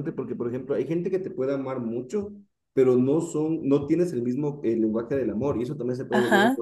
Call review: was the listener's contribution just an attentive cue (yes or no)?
no